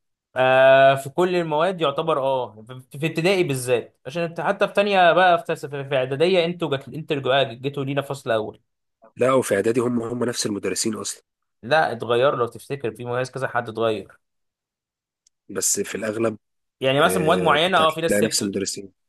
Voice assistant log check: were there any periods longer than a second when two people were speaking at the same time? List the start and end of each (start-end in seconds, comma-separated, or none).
17.1-18.5